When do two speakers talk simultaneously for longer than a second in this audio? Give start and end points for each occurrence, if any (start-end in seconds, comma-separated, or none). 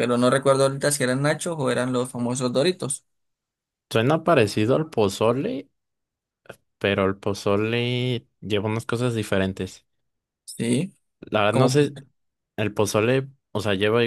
none